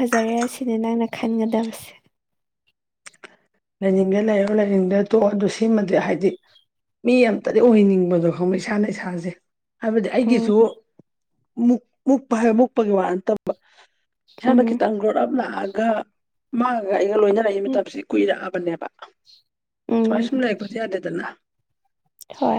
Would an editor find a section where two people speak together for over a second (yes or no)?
no